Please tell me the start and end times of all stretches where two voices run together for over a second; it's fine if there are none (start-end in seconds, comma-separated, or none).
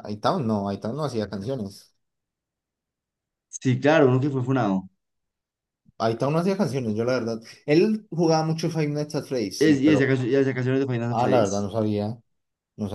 none